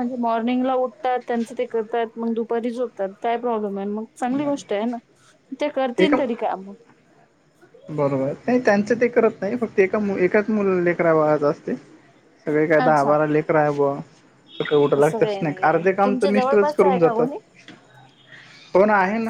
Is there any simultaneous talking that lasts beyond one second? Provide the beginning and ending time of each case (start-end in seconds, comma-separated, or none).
15.0-17.3